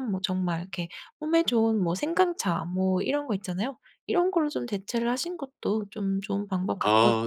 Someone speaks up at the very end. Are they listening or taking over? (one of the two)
taking over